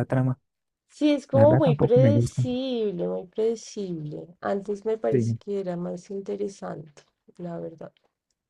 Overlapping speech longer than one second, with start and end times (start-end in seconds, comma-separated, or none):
1.3-2.6